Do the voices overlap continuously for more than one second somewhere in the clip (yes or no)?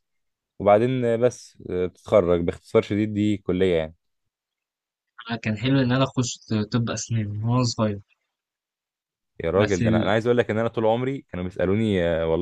no